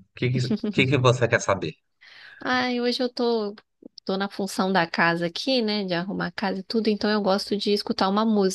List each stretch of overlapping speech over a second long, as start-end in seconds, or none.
none